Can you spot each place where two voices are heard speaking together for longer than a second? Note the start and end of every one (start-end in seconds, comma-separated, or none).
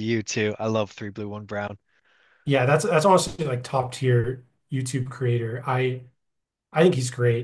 none